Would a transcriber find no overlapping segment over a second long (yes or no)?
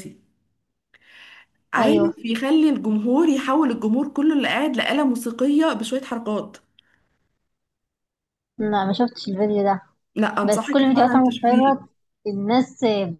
no